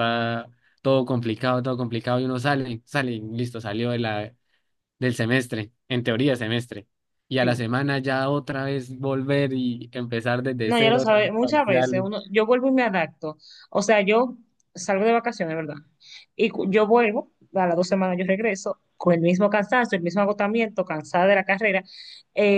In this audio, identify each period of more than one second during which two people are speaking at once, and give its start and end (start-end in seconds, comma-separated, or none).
10.6-12.1